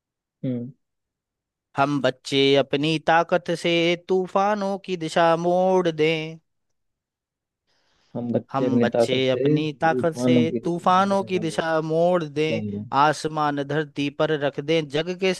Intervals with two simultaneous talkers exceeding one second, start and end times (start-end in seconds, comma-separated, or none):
8.5-11.9